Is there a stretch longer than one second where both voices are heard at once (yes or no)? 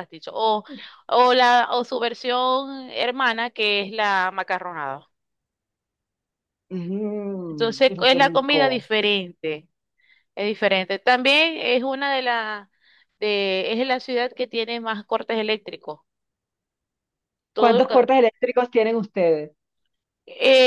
yes